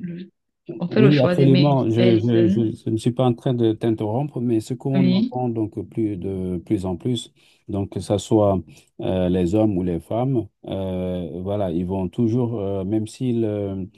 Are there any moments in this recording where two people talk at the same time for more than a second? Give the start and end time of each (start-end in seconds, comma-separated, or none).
0.9-2.7